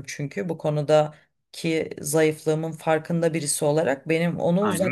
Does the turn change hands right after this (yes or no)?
no